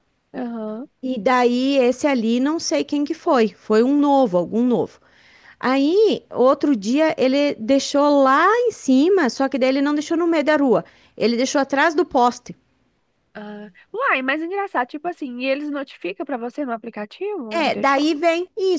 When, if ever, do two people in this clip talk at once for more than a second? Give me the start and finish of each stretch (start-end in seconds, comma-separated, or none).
none